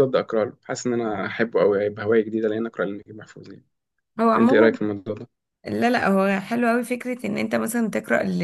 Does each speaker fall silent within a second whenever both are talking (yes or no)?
yes